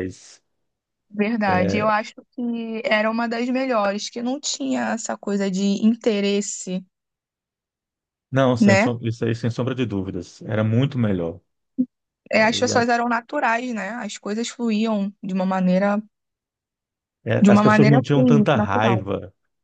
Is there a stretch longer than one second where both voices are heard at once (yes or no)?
yes